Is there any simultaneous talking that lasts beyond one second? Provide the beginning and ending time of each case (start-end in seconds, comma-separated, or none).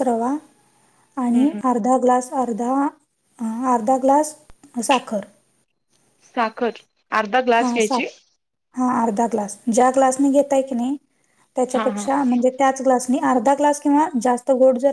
none